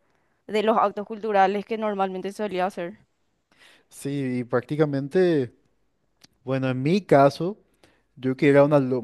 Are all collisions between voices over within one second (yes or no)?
yes